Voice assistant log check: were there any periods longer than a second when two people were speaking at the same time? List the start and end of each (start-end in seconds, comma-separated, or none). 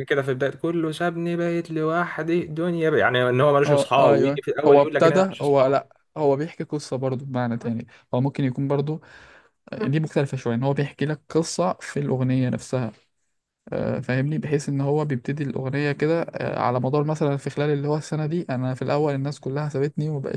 3.6-5.7